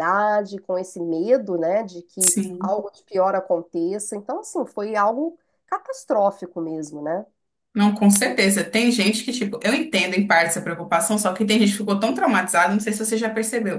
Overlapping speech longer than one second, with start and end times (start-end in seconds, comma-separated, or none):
none